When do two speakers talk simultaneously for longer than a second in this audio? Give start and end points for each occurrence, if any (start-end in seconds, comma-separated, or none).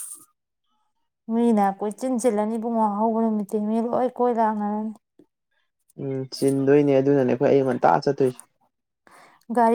none